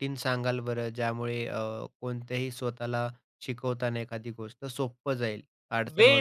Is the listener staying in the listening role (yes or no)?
no